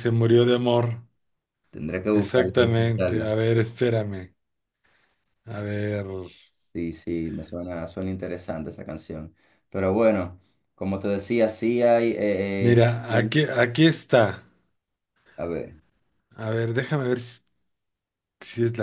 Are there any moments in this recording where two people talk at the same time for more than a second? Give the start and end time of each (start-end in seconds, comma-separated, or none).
2.1-3.3